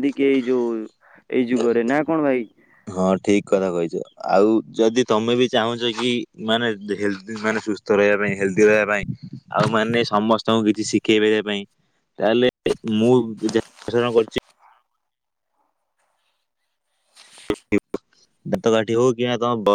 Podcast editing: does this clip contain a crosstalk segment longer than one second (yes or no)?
no